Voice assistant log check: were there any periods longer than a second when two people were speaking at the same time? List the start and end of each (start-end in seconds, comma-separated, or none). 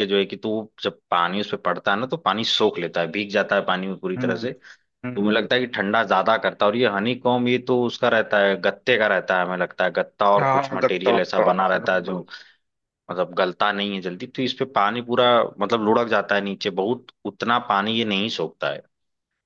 10.4-12.1